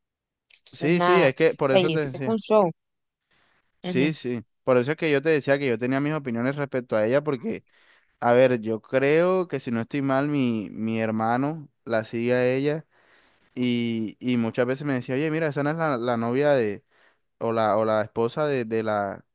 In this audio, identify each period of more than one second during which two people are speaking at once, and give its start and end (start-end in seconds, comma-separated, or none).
0.7-2.4